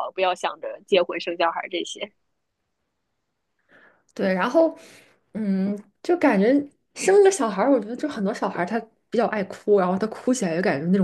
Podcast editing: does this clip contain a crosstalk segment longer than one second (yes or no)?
no